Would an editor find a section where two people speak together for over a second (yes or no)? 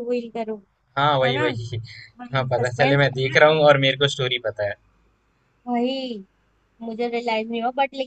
yes